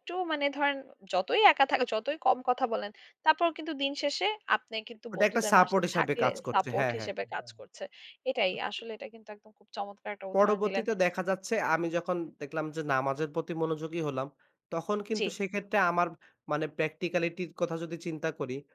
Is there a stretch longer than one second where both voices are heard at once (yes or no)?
yes